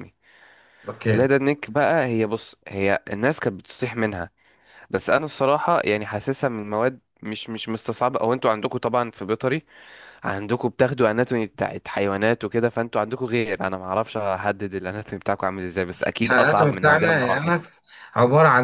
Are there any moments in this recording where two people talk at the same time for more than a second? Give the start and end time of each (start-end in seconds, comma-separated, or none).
16.2-17.6